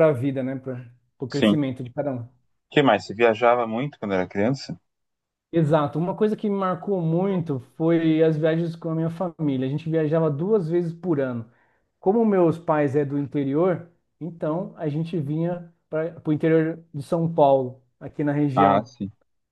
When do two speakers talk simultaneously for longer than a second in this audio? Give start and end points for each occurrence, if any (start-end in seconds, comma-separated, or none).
none